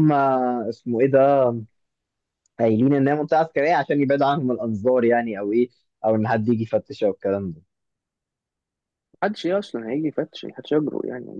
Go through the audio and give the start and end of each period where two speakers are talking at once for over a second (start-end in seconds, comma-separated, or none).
none